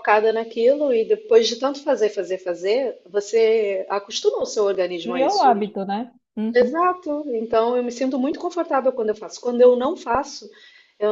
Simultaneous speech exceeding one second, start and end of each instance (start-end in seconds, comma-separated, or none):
none